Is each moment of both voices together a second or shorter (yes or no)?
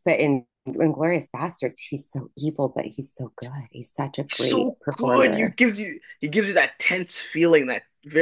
no